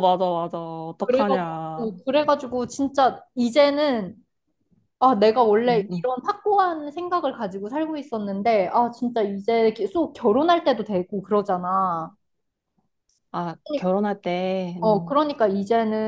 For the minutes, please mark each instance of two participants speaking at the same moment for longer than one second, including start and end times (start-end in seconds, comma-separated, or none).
none